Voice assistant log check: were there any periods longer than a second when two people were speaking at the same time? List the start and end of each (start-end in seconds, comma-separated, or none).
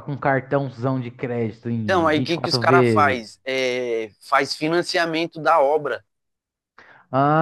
1.8-3.2